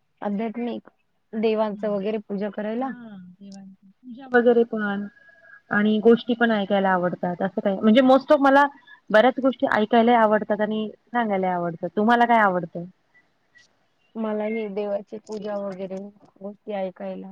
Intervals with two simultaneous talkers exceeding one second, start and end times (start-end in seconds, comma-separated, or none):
none